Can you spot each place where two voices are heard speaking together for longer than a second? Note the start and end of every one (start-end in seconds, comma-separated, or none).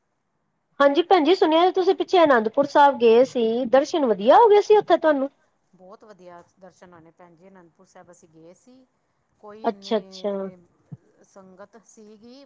none